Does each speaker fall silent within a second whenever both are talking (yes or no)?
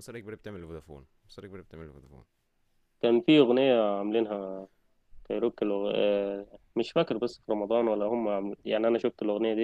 yes